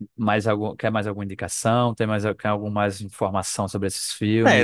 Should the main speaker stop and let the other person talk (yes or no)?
yes